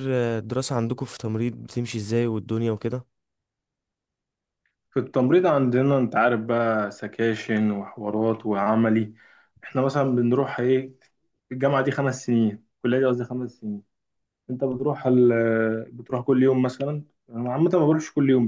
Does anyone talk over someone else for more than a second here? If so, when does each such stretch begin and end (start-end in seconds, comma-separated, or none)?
none